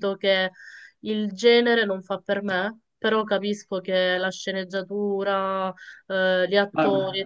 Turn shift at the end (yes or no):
yes